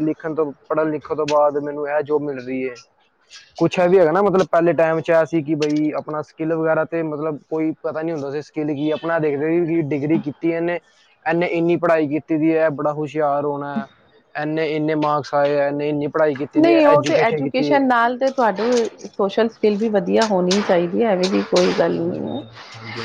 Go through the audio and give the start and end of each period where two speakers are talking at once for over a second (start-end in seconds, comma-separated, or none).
none